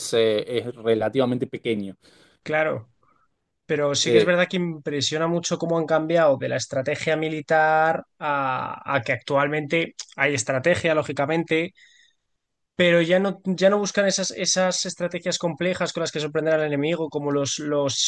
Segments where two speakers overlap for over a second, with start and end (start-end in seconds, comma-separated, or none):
none